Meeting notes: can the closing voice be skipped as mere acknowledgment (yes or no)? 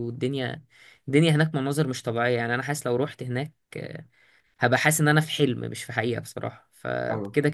yes